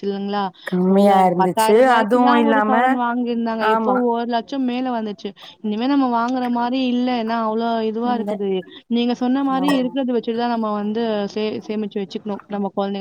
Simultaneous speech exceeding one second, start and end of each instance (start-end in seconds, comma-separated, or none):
1.0-2.7